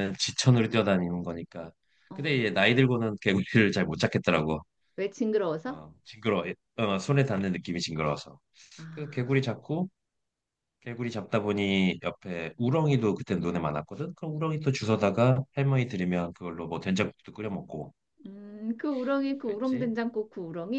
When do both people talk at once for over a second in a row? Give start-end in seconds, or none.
none